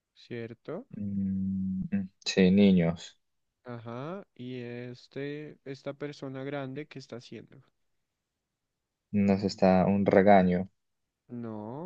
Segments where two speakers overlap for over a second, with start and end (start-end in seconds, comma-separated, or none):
none